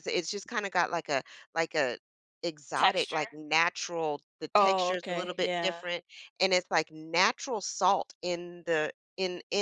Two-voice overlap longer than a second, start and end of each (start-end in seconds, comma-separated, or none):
4.6-5.8